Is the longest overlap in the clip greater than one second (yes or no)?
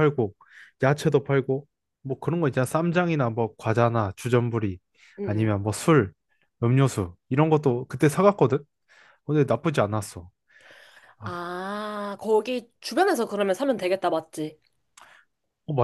no